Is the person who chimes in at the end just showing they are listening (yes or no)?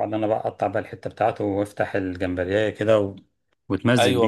no